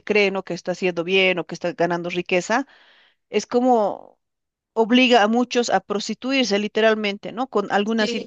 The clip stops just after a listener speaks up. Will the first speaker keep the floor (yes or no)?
yes